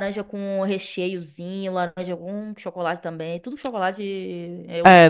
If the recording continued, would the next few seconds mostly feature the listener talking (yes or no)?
yes